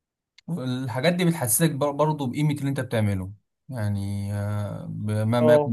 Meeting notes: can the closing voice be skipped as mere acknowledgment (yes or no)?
yes